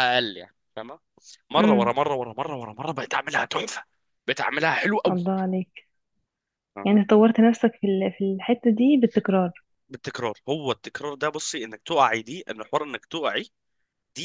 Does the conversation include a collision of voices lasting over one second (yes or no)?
no